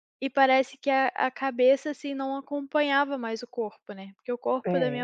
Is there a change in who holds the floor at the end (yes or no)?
no